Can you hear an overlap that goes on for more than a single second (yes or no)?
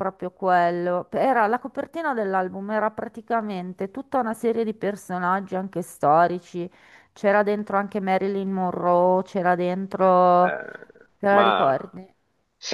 no